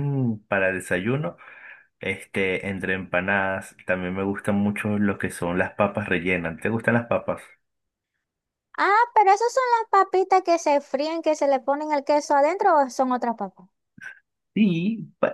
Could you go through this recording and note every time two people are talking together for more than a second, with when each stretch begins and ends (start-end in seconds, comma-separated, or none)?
none